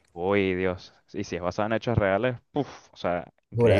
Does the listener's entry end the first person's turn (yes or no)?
yes